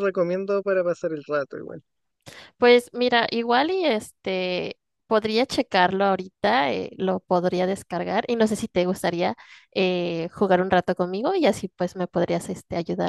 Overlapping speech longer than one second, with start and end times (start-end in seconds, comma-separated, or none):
none